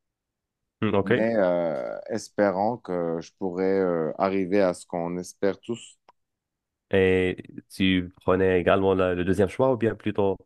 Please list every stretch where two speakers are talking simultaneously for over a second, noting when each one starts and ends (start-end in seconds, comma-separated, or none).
none